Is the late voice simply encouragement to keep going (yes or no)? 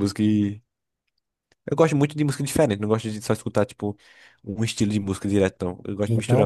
no